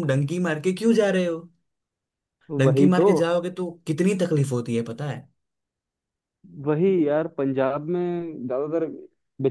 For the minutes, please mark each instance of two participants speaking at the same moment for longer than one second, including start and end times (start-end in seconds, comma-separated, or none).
none